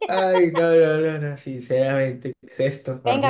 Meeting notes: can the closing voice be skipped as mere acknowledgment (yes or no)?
no